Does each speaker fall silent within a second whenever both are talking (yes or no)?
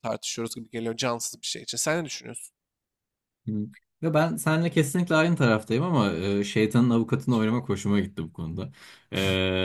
yes